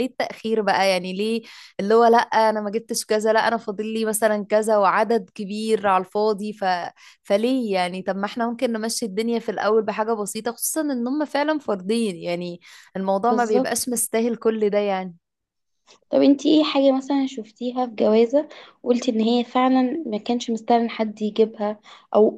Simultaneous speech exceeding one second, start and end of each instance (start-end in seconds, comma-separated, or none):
none